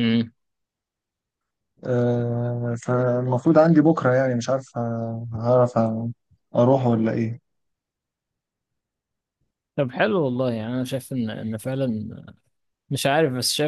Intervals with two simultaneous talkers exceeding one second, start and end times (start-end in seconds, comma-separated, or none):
none